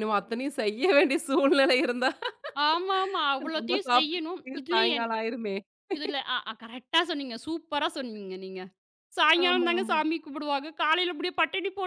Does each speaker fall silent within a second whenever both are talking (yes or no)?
no